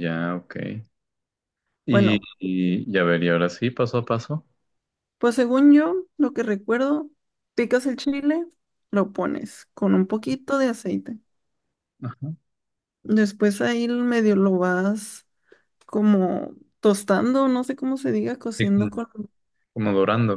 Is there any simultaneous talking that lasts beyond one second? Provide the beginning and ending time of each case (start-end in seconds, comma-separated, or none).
none